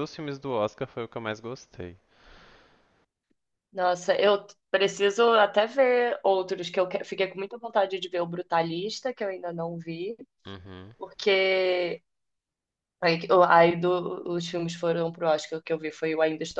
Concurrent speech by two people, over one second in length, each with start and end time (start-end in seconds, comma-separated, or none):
none